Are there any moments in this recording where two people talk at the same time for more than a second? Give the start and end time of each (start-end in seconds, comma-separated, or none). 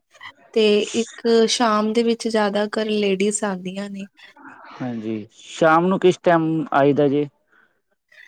none